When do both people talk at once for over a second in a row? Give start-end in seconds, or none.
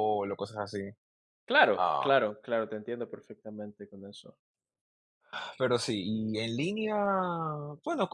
none